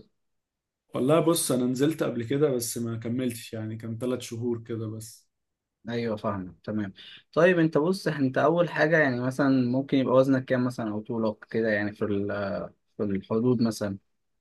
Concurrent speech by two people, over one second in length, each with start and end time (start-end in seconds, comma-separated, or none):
none